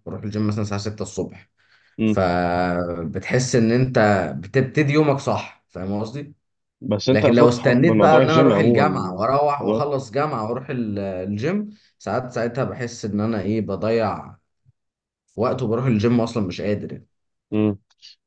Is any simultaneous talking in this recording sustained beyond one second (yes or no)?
yes